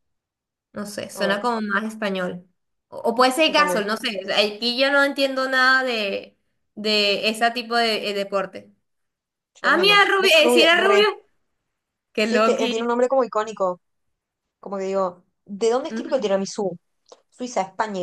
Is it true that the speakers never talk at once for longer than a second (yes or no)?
no